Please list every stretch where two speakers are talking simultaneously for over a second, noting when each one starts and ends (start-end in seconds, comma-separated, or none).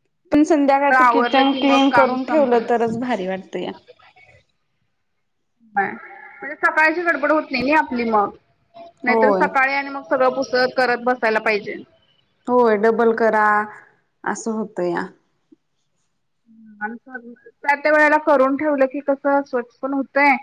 0.7-2.7